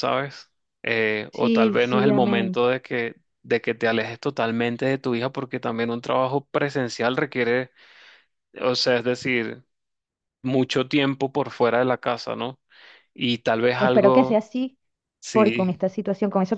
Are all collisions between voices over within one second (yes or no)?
no